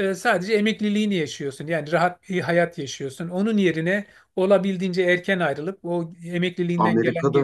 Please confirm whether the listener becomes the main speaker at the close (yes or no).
no